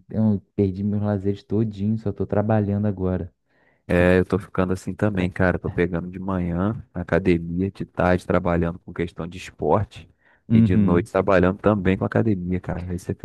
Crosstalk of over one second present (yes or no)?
no